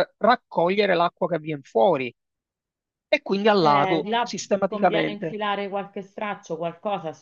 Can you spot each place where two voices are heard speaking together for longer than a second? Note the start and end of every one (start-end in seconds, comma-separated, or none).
3.6-5.4